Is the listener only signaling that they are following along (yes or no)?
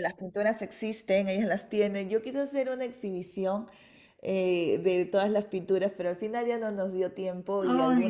yes